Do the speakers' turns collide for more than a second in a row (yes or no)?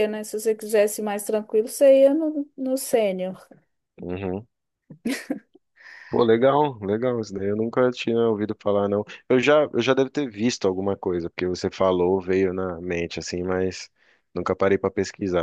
no